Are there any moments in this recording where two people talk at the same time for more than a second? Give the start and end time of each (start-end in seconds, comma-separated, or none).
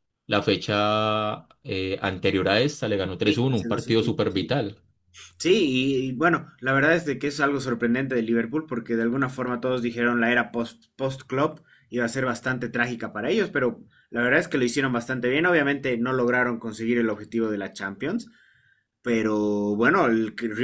3.2-4.5